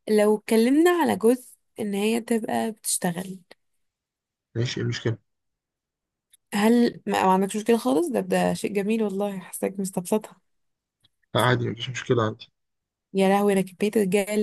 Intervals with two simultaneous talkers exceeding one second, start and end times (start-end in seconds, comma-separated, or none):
none